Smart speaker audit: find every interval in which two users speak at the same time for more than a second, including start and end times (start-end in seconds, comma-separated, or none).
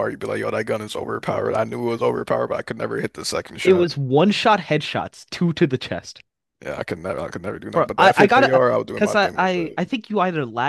7.7-9.8